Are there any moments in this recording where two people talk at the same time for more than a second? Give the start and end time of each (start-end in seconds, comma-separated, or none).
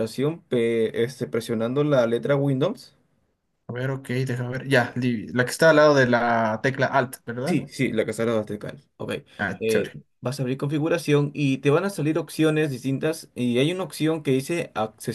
none